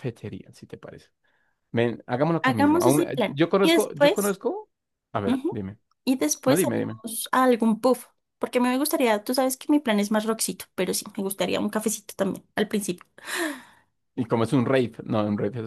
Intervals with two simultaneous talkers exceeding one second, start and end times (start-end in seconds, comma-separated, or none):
2.4-4.4